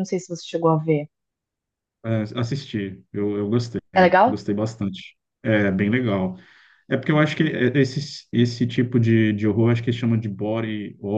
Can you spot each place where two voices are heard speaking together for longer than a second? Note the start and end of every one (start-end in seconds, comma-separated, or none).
none